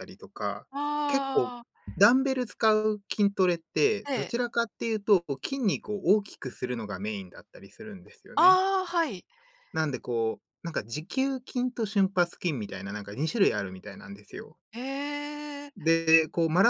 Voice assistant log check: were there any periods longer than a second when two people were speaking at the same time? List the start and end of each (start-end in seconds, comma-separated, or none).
none